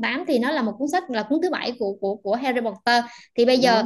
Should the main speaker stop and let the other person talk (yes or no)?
no